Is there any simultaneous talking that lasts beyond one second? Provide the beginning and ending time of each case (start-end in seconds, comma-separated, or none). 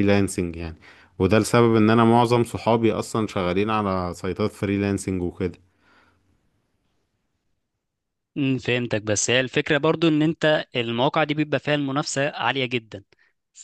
none